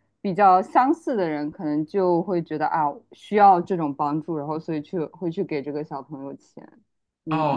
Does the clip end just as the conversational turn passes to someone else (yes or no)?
yes